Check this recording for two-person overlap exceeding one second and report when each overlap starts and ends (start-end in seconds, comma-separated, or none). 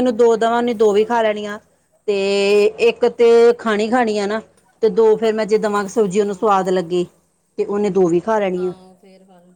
none